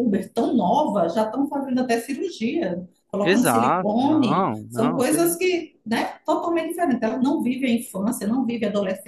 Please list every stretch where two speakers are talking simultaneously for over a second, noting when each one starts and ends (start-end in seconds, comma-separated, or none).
3.2-5.4